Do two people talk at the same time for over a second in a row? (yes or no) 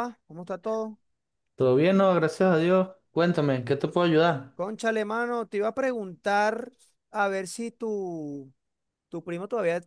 no